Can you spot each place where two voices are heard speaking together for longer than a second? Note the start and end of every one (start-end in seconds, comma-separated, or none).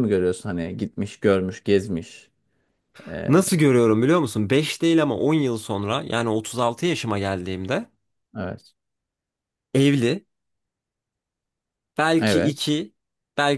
none